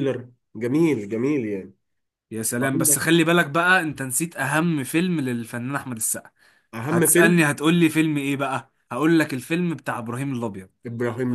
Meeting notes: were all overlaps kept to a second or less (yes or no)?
yes